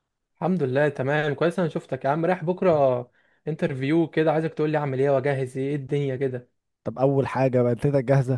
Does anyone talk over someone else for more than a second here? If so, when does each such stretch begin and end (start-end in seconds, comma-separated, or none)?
none